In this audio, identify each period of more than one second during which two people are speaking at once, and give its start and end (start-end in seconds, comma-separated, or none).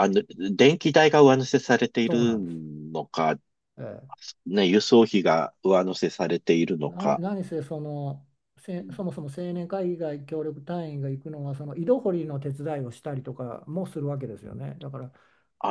none